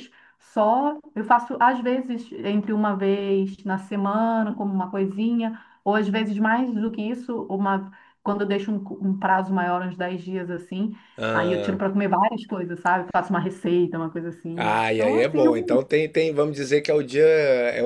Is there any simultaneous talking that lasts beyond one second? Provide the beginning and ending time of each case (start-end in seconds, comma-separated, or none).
14.5-15.8